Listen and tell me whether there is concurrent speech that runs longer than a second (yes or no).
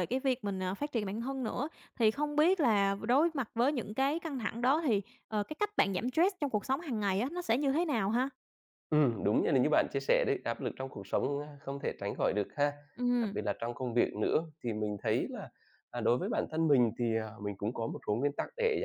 no